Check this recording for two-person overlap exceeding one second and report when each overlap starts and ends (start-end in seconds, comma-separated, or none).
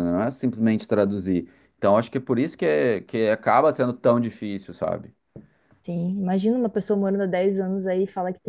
none